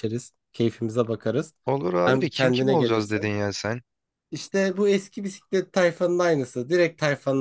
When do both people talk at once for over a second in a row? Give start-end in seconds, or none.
2.0-3.3